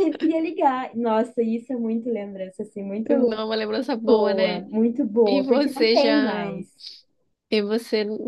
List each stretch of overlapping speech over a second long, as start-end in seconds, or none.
5.3-6.5